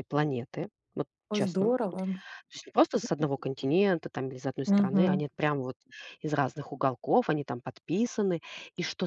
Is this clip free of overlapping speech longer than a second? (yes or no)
yes